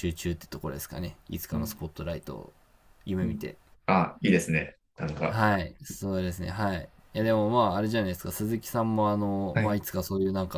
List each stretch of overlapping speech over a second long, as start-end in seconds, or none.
none